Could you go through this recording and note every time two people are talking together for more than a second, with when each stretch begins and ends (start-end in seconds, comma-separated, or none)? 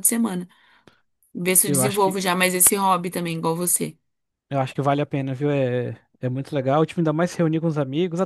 none